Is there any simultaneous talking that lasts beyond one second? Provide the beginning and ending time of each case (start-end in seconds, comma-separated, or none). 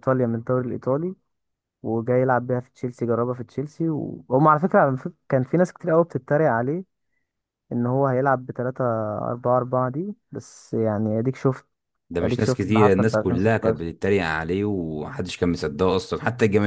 12.2-13.8